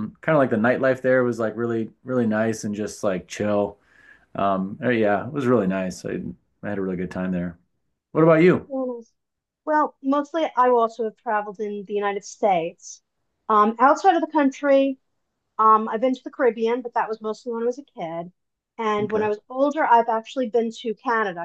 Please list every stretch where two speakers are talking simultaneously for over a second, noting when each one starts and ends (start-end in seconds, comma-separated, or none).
none